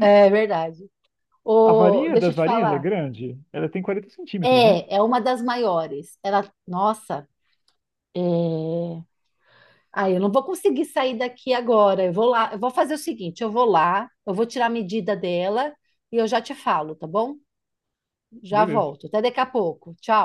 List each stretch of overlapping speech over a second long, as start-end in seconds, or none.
1.7-2.9